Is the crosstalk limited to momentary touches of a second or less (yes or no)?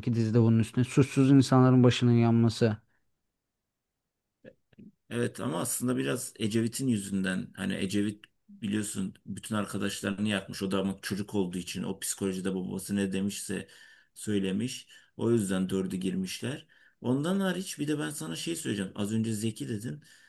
yes